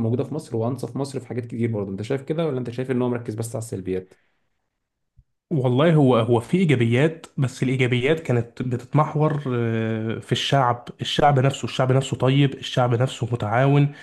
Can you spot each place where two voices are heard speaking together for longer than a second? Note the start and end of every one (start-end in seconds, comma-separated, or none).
none